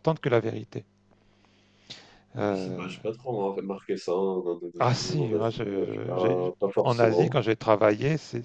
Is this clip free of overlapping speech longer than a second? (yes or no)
no